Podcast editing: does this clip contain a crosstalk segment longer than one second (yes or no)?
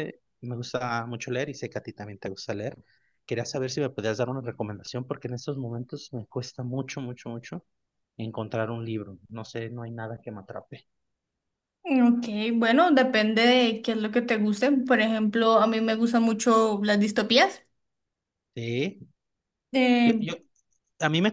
no